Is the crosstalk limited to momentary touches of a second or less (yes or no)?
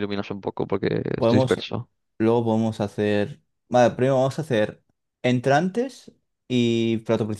yes